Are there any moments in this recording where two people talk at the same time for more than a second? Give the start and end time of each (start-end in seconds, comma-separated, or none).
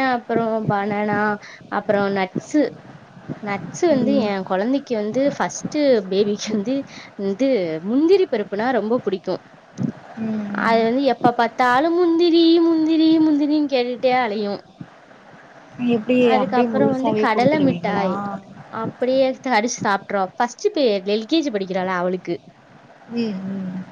16.3-18.1